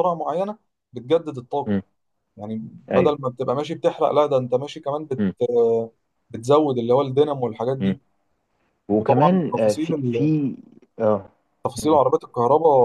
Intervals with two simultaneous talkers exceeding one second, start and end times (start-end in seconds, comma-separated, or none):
8.9-10.3